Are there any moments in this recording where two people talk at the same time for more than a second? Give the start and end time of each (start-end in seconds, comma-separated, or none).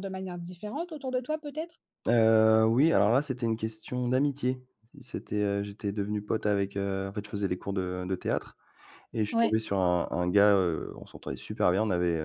none